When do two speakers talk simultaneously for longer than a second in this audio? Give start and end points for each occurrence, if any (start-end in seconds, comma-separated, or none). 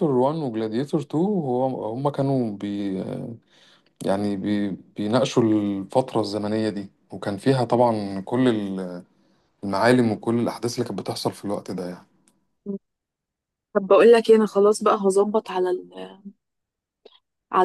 none